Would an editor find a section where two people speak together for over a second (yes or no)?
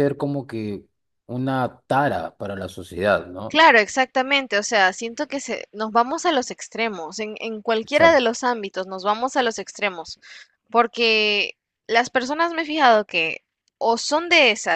no